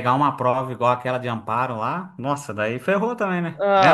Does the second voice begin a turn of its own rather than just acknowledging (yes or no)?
yes